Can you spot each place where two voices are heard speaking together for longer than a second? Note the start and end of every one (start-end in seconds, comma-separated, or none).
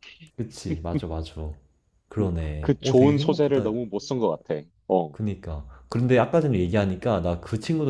2.2-3.7